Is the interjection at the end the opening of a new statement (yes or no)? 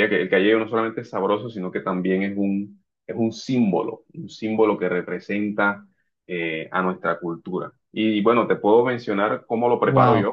yes